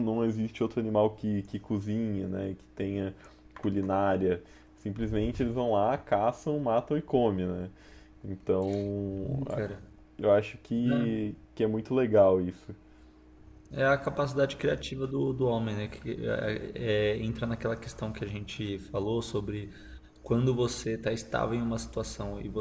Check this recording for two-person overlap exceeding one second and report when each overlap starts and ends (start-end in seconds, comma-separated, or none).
none